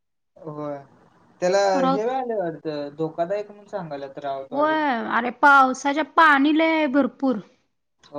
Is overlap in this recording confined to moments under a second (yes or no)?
yes